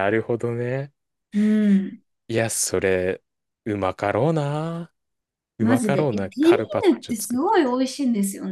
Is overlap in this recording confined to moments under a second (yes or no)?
no